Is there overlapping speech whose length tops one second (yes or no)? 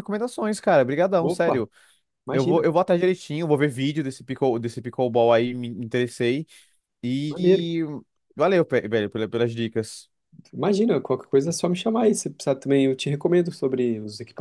no